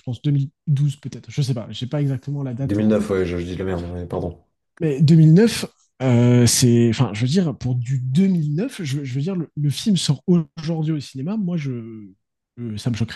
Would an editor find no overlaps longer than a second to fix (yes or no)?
yes